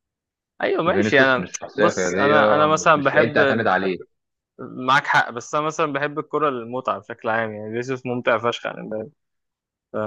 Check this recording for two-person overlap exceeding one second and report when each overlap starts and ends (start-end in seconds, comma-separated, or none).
0.9-3.6